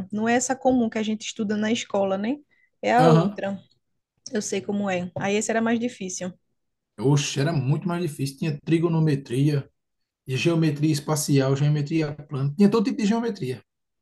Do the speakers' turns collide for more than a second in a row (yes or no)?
no